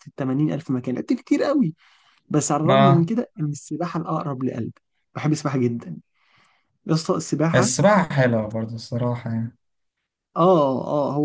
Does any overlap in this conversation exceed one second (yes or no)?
no